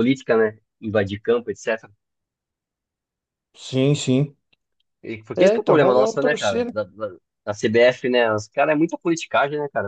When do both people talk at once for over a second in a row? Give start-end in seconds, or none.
5.3-6.7